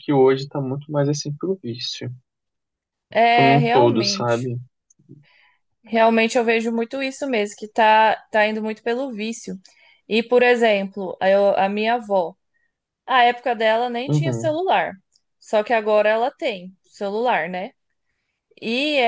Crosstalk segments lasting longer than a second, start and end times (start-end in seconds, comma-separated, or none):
3.2-4.5